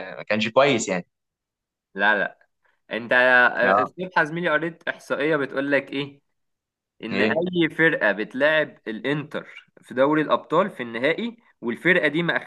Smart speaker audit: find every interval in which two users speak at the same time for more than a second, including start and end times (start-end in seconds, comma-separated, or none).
none